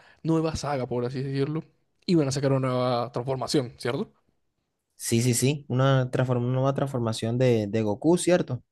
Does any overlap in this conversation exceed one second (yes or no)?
no